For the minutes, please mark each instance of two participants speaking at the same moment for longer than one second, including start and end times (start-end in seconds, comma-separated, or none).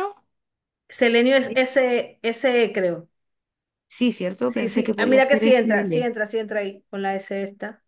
4.4-6.1